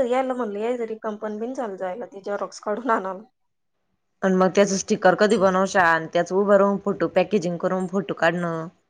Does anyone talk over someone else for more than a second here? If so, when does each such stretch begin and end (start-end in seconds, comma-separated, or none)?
none